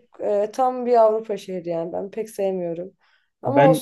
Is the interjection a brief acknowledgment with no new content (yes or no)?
yes